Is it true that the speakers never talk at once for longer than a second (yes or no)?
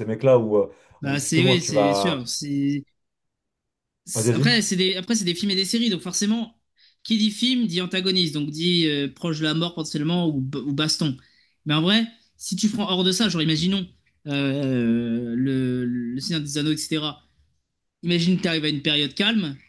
no